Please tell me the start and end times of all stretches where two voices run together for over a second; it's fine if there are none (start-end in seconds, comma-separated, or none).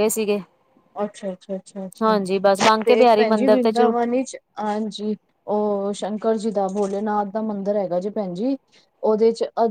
2.0-3.9